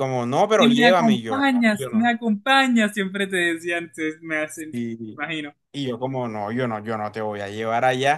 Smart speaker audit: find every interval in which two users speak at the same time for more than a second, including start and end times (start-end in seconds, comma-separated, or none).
0.6-2.1